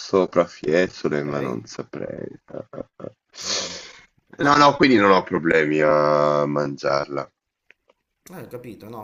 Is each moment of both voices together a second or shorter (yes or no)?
yes